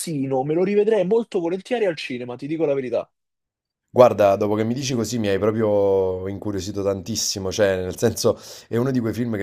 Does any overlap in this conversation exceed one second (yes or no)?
no